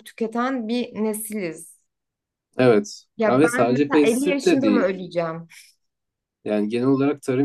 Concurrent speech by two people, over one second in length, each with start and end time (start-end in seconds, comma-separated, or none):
3.2-5.0